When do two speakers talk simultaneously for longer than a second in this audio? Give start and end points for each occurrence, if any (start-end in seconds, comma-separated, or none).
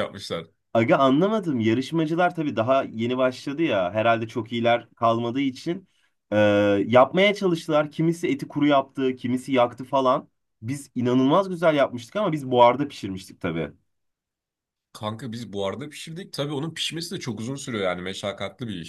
none